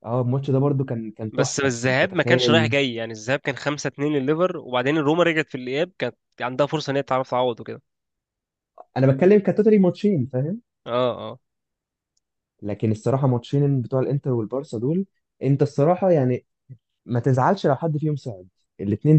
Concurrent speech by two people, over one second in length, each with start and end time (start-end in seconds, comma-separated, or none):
1.3-2.7